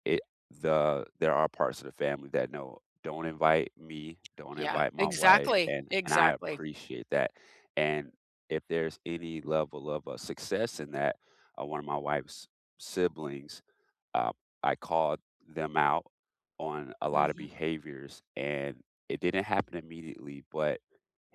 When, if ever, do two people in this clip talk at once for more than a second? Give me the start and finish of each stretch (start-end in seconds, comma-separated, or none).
4.5-6.6